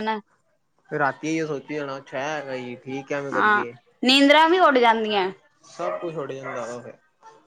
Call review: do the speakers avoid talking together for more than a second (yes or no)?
yes